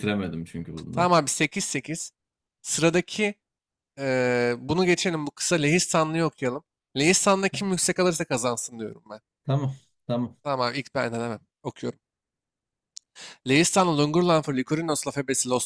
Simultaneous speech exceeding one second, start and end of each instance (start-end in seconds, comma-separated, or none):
none